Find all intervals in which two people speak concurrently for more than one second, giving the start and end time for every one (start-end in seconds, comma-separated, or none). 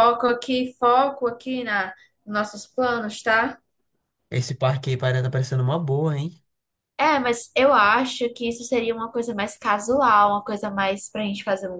none